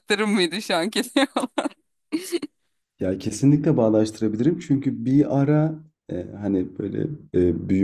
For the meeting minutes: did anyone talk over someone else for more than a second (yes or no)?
no